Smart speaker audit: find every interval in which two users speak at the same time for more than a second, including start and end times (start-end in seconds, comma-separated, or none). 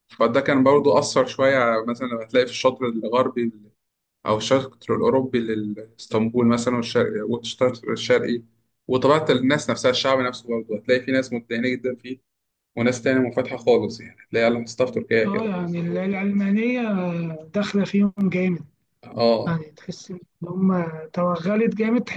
none